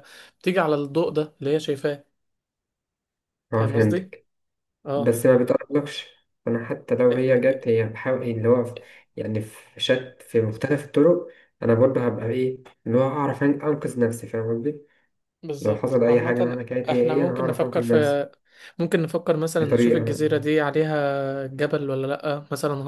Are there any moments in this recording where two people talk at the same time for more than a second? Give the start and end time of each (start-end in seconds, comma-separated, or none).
15.6-18.2